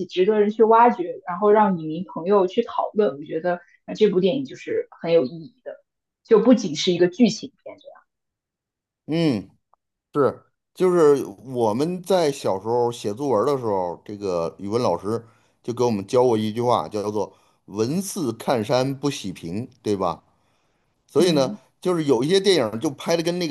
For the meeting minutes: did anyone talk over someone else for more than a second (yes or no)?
no